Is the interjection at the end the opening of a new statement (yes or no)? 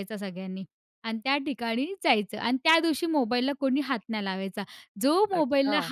no